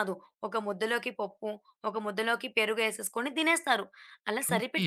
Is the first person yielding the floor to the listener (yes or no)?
no